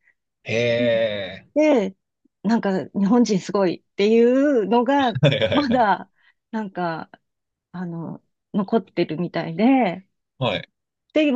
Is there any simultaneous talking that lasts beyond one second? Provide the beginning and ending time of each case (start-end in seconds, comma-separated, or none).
none